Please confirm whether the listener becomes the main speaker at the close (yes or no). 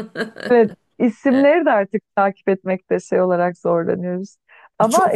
yes